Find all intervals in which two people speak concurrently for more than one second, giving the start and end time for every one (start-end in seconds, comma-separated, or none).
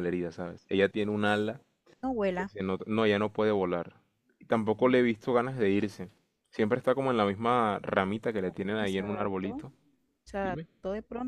8.4-9.7